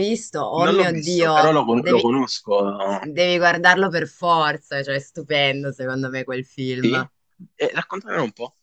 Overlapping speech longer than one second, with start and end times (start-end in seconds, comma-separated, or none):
0.5-2.1